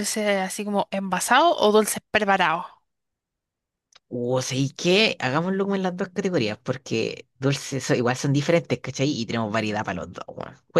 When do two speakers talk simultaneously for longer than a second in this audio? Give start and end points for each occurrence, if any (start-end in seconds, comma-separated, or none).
none